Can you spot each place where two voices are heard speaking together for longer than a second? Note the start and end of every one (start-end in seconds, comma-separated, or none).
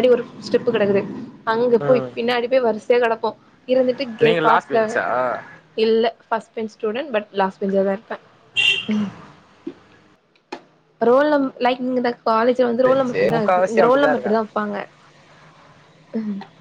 12.8-14.4